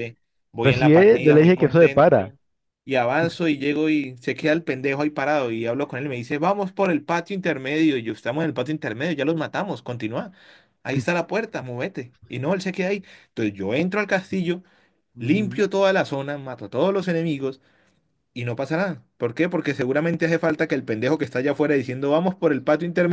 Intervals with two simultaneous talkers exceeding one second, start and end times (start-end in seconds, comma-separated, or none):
0.6-2.2